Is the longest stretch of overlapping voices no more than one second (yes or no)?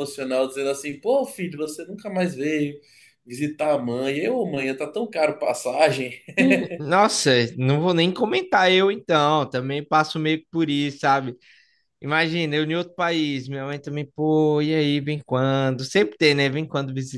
yes